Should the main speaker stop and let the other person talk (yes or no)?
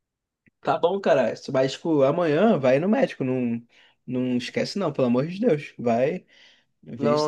yes